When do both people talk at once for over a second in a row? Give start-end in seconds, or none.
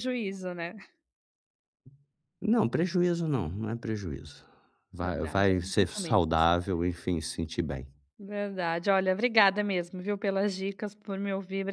5.0-6.2